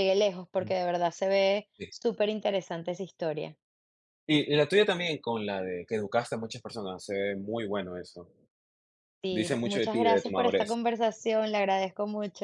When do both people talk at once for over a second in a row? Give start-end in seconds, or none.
9.3-10.8